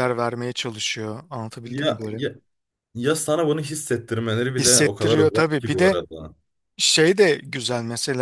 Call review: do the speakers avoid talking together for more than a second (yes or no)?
no